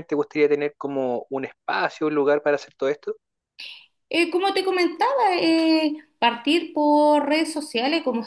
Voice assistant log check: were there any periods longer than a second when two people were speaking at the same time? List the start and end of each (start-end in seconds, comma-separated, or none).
none